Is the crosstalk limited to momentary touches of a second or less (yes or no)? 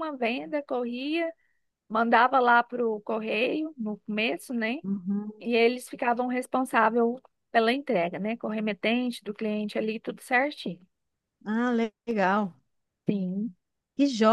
yes